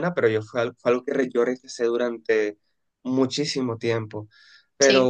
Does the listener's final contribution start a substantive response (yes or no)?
no